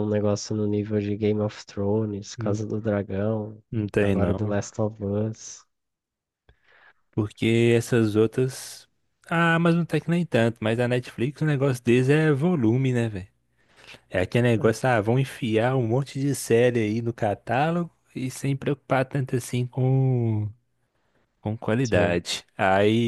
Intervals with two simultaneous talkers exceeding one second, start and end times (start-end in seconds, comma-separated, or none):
none